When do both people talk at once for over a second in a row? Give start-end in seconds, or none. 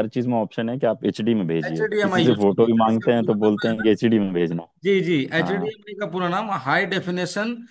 1.7-3.9